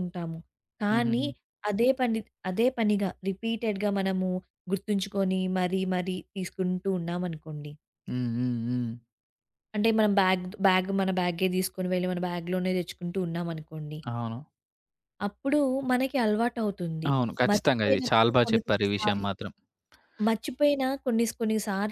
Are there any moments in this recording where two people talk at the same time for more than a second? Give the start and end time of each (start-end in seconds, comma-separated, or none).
17.5-19.2